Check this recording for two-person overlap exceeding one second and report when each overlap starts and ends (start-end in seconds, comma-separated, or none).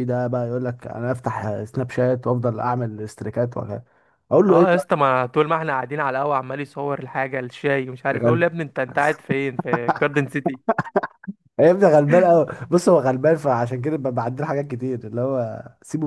none